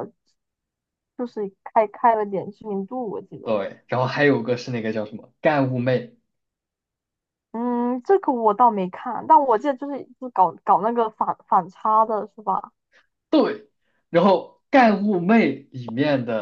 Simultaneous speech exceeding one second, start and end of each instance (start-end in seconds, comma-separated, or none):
none